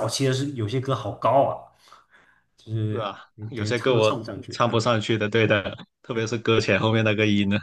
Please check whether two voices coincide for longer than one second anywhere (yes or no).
yes